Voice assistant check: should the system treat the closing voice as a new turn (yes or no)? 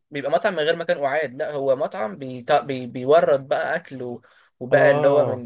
no